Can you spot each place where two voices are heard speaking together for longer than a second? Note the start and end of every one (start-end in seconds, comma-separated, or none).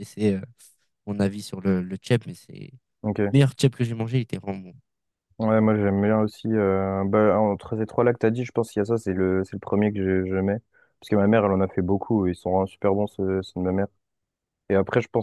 none